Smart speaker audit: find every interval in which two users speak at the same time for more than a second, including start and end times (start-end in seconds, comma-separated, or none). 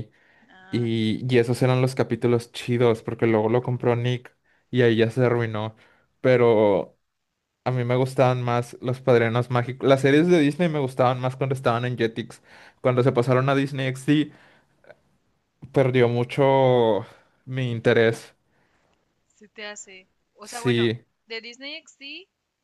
none